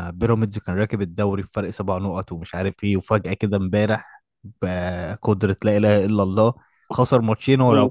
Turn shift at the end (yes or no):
no